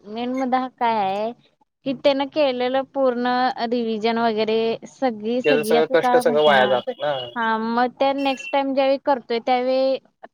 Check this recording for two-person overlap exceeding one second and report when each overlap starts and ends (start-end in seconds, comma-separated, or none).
5.4-6.7